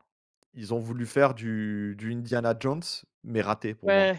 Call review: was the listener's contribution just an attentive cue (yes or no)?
no